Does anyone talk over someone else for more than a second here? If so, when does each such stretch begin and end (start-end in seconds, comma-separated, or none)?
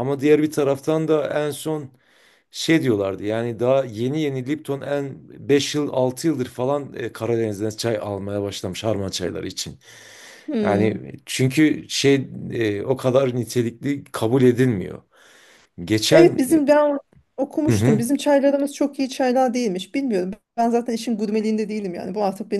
none